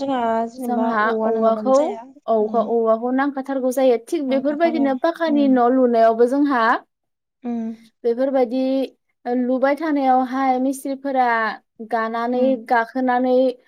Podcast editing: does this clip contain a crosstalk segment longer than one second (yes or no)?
yes